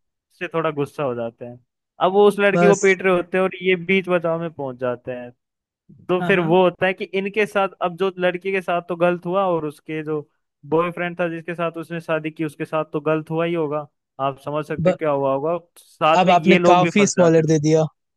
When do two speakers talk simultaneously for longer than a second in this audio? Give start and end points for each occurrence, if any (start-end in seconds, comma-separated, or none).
16.2-17.5